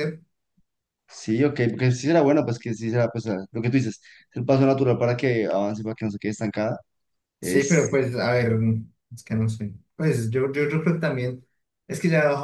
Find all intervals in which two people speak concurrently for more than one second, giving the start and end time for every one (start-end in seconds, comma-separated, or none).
none